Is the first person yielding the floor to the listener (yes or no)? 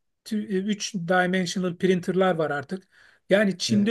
no